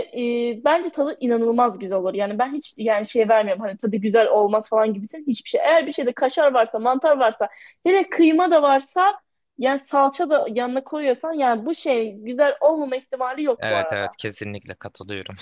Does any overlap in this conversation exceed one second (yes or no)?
no